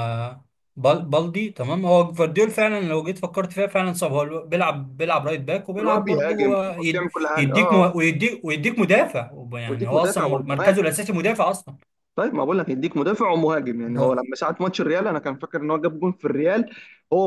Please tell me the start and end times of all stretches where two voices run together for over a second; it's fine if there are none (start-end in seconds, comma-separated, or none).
5.8-7.9, 9.7-10.9